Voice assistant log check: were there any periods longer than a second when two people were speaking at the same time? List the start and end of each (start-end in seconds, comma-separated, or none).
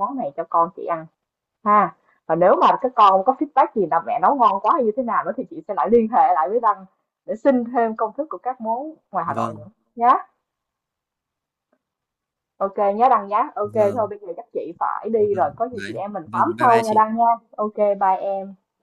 15.2-17.0